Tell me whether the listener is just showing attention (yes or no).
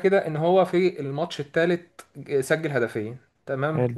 yes